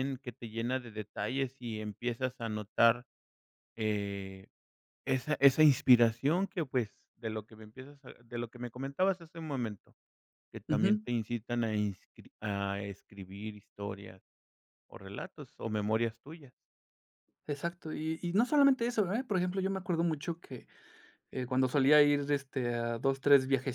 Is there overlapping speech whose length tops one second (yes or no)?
no